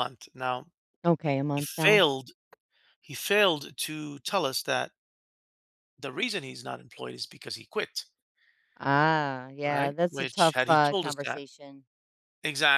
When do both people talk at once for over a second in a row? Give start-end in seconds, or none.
9.6-11.4